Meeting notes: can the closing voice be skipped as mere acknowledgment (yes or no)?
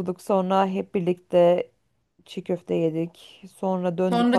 no